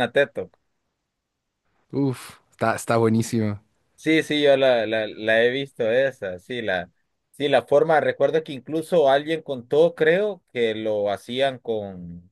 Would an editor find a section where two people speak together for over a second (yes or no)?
no